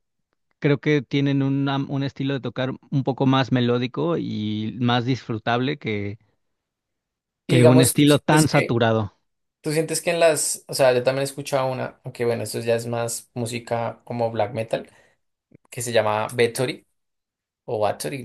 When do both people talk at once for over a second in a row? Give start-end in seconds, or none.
7.5-8.8